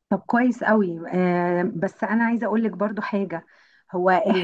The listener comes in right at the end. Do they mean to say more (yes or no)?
no